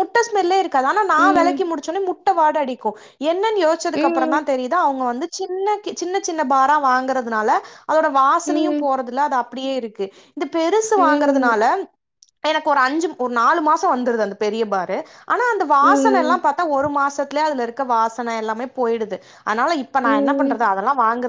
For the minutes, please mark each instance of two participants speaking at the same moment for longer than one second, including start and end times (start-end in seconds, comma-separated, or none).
none